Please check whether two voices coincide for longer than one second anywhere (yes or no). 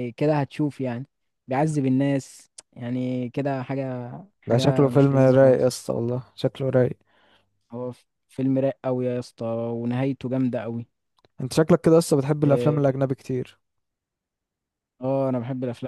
yes